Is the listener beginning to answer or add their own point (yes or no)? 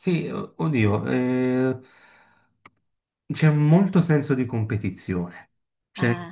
no